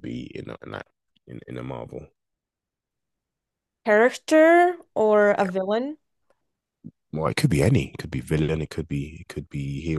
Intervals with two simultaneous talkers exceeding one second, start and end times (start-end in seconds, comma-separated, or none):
none